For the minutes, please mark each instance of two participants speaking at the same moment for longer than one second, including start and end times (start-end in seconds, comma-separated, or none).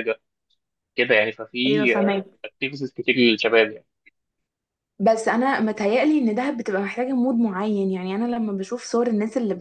none